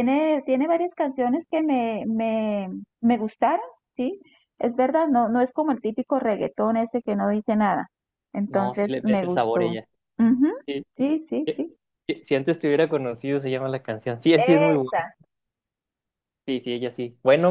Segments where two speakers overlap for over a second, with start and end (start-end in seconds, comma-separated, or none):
8.5-9.8